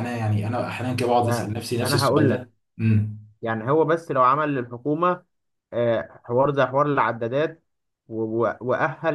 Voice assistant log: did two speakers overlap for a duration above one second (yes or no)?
yes